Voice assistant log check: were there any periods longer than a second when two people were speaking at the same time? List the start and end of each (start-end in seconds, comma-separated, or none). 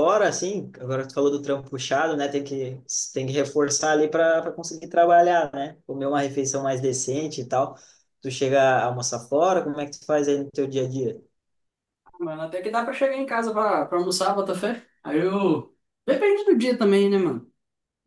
none